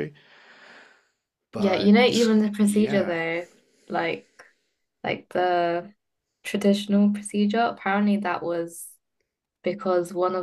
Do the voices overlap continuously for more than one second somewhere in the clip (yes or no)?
yes